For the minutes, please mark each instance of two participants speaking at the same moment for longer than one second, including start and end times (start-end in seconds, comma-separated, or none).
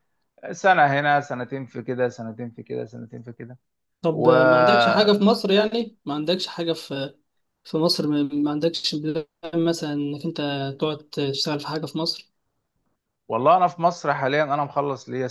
none